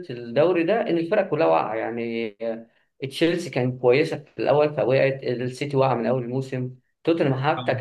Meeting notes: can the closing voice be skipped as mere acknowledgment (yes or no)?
yes